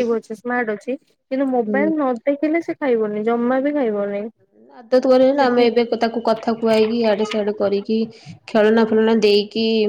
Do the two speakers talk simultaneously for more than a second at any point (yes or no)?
no